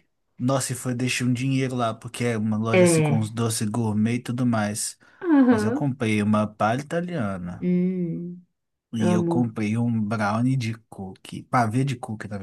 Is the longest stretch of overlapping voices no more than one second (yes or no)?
yes